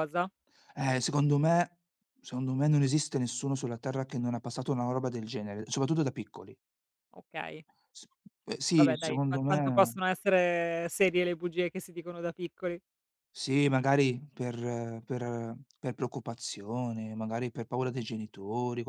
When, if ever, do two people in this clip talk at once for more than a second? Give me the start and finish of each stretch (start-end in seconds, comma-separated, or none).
8.7-9.9